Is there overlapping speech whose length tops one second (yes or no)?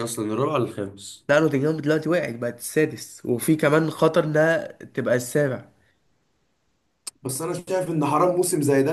no